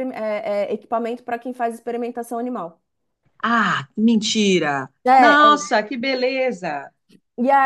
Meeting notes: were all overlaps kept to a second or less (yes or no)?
yes